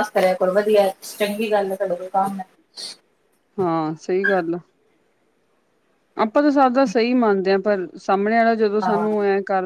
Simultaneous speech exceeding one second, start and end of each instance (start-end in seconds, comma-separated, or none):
none